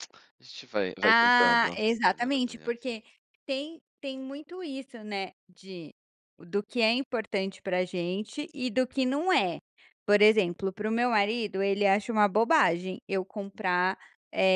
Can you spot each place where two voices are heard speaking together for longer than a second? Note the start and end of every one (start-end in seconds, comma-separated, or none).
1.0-2.7